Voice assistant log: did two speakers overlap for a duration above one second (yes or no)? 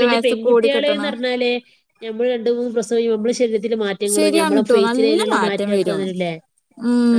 yes